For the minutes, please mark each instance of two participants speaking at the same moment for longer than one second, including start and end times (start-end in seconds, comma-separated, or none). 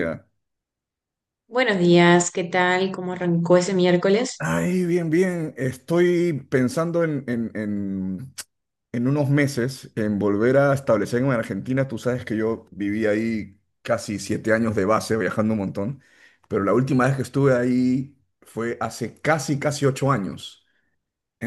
none